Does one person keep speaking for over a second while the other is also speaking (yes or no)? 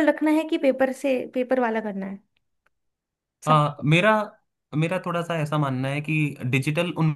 no